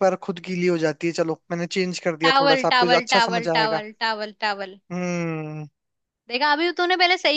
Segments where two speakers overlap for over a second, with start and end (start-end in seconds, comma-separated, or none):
2.2-3.8